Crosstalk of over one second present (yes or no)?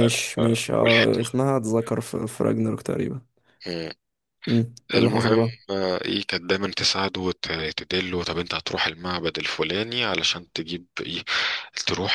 no